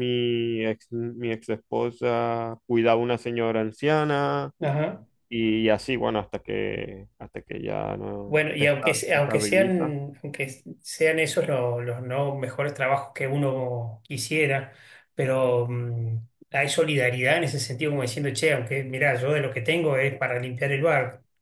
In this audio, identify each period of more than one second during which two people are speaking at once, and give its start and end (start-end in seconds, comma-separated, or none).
8.3-9.9